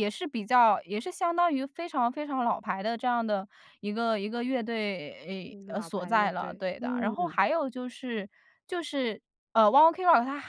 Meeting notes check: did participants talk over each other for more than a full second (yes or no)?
yes